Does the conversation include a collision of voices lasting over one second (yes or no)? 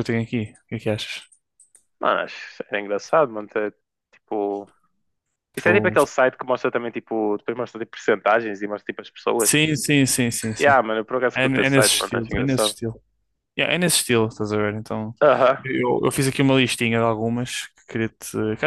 yes